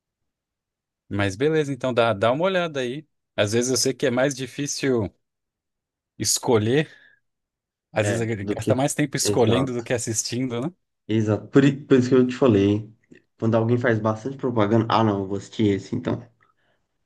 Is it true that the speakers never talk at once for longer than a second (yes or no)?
no